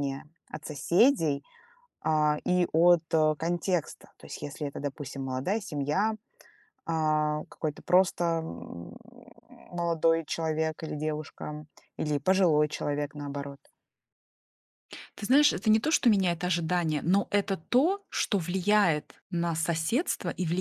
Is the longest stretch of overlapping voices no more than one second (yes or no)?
yes